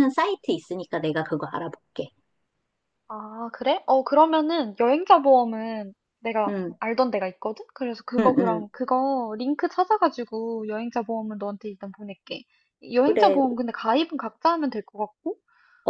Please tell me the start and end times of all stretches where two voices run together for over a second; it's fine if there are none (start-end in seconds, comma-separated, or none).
none